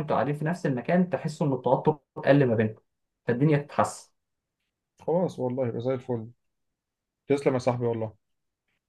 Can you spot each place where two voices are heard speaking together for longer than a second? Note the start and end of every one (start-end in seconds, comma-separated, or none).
none